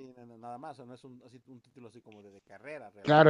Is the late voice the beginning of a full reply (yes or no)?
yes